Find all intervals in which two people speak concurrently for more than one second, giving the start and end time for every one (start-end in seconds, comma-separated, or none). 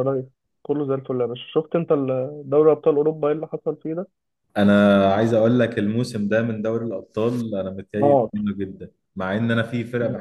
none